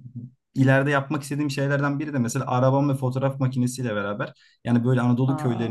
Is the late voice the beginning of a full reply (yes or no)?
no